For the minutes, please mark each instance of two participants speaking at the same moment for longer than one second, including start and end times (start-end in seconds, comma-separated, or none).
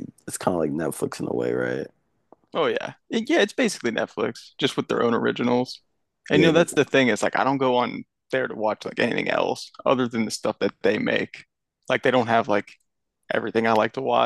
none